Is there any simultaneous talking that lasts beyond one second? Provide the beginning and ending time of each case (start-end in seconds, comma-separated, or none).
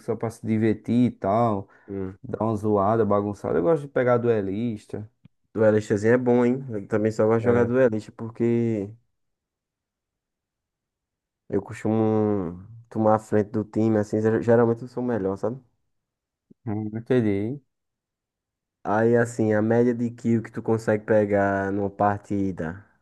none